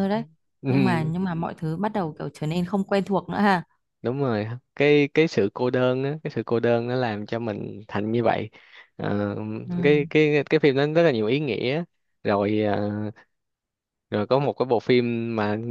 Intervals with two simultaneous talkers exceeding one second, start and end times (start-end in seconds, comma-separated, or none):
none